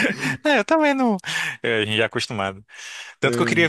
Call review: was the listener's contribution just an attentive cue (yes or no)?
yes